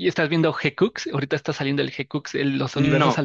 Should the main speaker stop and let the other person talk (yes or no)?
yes